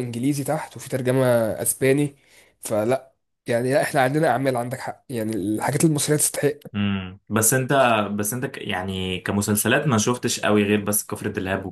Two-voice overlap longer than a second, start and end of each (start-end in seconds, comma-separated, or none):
none